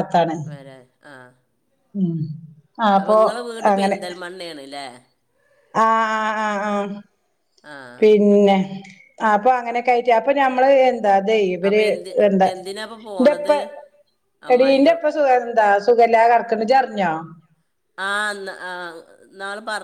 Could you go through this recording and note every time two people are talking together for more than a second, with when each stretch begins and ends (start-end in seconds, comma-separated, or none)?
none